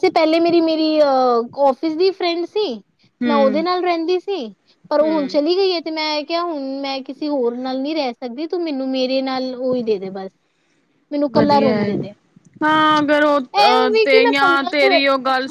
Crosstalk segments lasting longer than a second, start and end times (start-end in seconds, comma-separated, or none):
13.4-14.9